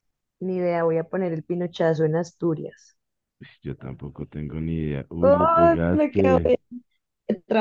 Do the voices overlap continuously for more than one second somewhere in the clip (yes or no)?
yes